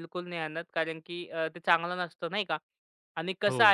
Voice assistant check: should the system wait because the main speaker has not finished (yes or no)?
yes